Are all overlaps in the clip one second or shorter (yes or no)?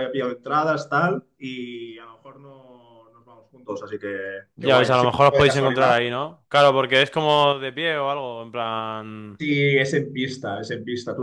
no